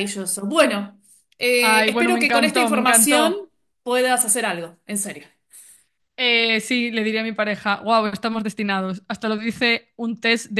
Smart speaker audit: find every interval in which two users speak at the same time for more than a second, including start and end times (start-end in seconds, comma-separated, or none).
1.6-3.3